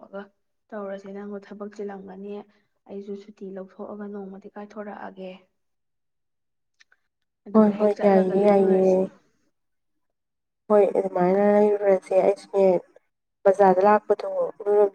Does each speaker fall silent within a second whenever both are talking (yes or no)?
no